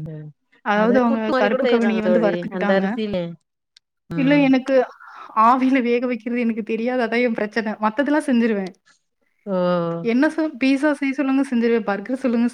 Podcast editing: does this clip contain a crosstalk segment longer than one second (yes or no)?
yes